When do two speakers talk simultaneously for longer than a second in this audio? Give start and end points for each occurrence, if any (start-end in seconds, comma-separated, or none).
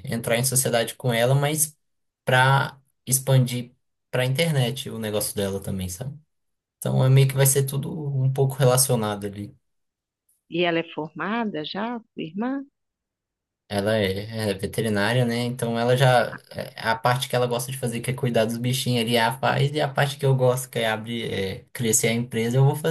none